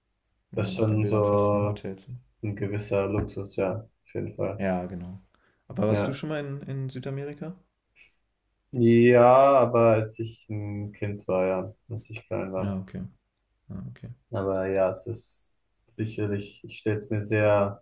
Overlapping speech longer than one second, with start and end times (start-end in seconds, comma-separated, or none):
0.5-1.8